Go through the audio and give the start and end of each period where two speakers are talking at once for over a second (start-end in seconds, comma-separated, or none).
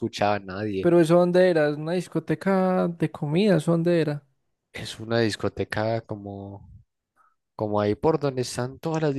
none